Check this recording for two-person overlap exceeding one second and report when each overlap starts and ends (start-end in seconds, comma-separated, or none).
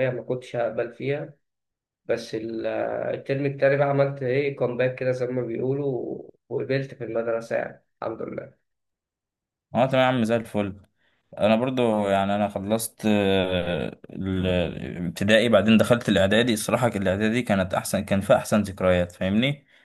none